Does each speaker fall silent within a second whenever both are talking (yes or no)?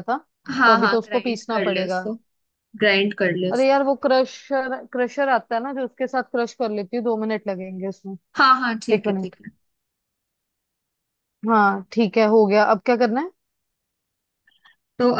no